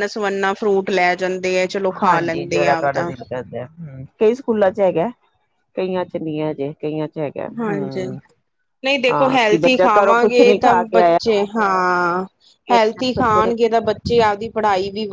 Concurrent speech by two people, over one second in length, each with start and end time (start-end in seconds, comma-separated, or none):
9.1-11.2